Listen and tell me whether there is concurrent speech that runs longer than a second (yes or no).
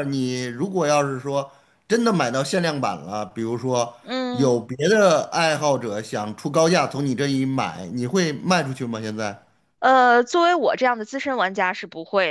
no